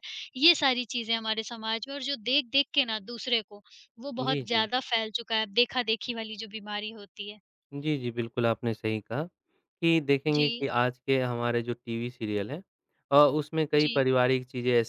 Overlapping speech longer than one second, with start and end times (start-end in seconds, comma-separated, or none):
none